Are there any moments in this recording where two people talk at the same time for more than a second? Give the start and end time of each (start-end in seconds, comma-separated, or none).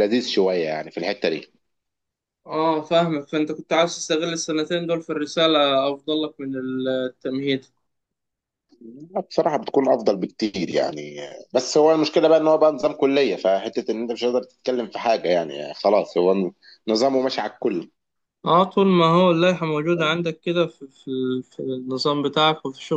none